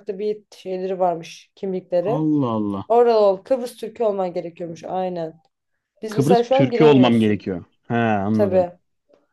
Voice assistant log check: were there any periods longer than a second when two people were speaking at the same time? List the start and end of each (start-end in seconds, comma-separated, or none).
6.1-7.5